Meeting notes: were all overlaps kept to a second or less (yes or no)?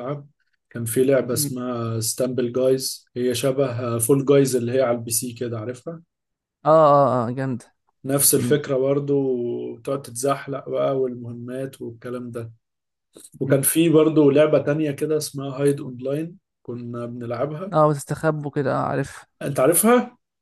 yes